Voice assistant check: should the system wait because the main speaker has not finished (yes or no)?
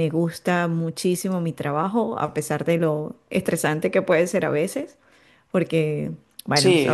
no